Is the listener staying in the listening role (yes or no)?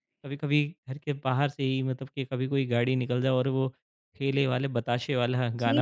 no